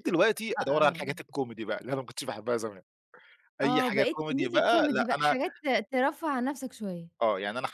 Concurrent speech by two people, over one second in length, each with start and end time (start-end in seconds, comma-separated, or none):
3.6-5.3